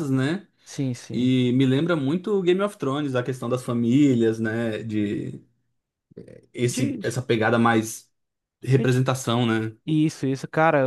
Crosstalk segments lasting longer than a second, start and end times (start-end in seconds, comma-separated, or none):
none